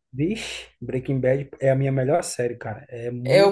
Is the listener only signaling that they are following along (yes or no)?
no